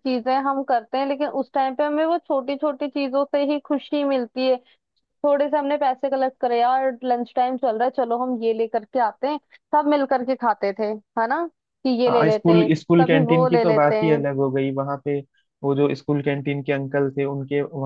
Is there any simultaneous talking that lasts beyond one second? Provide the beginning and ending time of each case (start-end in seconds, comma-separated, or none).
12.1-13.9